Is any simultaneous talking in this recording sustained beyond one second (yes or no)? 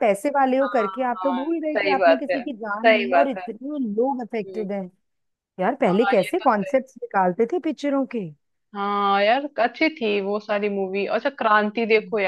yes